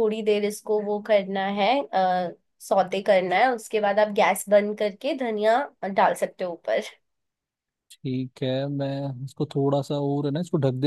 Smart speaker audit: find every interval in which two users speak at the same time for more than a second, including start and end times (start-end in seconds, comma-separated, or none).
none